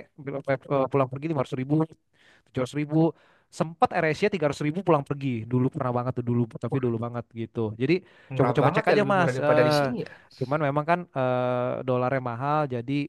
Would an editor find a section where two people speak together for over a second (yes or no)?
yes